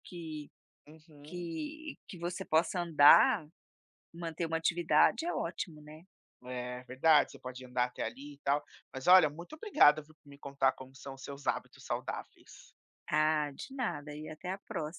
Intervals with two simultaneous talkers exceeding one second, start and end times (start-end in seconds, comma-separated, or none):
none